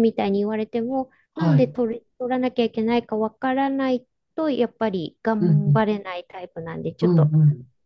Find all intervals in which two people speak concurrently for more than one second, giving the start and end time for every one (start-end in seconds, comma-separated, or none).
none